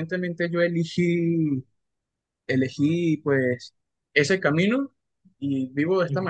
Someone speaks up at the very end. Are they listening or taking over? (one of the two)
listening